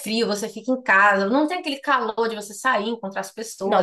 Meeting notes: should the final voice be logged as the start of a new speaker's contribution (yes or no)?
yes